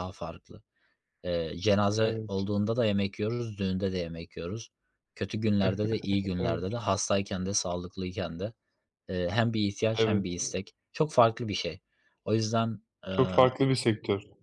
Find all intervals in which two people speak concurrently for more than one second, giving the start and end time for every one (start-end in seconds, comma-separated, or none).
none